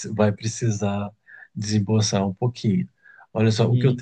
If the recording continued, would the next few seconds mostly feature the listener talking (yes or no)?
no